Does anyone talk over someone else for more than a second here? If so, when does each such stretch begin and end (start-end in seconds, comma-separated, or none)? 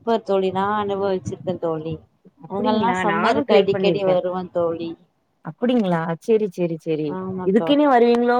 2.5-4.1